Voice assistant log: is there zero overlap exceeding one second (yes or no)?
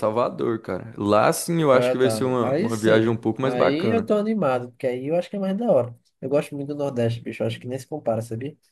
no